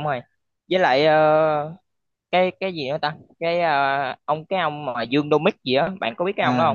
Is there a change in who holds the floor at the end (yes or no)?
yes